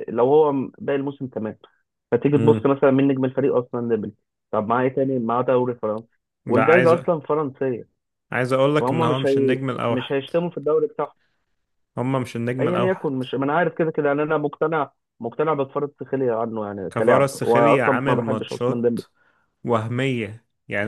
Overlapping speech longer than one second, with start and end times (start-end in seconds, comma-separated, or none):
8.8-10.1, 16.9-19.0